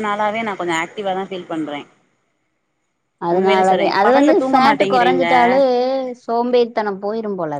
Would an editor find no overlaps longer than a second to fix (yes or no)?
no